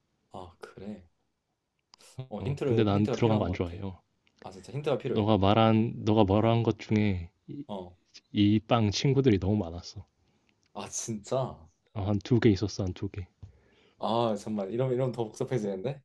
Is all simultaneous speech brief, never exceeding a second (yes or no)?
no